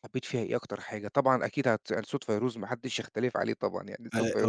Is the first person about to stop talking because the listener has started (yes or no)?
no